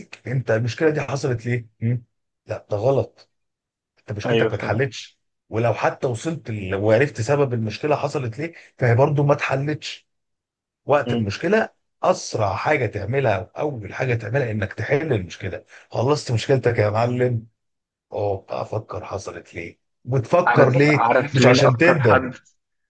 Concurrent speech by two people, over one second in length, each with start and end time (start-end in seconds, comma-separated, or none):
20.5-22.2